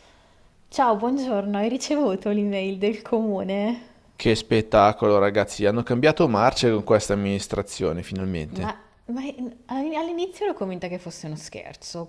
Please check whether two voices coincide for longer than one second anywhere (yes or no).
no